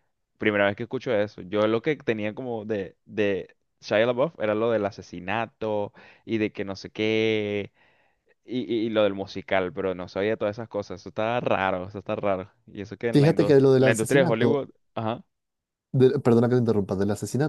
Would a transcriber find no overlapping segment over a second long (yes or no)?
no